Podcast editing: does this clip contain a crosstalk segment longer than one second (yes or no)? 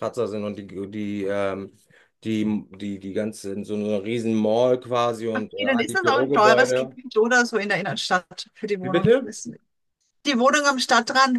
yes